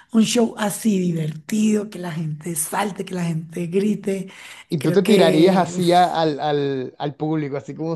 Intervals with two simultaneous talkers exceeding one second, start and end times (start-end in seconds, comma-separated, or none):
4.8-6.2